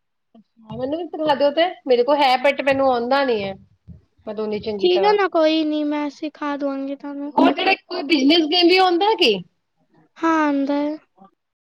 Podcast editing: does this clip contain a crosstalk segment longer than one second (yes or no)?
no